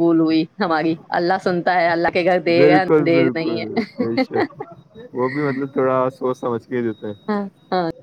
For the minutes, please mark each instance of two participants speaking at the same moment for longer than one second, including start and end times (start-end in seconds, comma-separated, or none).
2.6-4.1